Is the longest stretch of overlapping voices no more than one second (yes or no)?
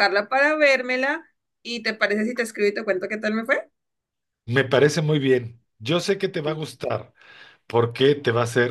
yes